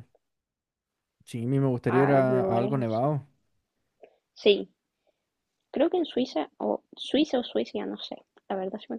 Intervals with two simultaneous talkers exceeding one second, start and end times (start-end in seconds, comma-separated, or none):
1.9-3.1